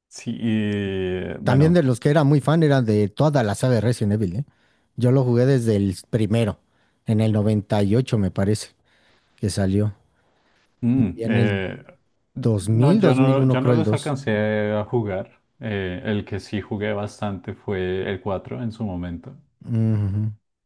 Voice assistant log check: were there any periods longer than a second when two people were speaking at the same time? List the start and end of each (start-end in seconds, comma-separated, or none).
12.4-14.1